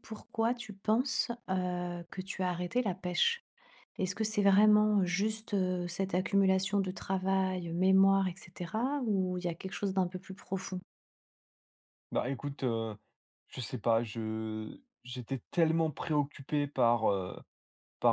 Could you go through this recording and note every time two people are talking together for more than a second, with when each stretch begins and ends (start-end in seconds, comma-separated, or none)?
none